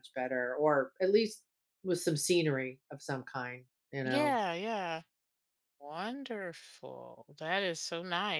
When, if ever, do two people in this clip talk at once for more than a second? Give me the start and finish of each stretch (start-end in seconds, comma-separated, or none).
none